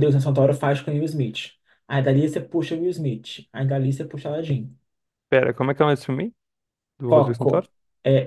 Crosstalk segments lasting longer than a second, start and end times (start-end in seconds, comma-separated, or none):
none